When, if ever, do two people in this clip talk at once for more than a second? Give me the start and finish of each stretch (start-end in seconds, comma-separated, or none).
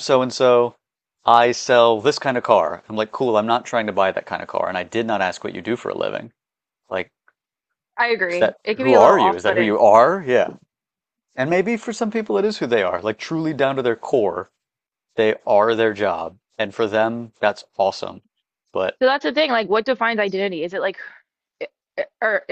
8.3-9.8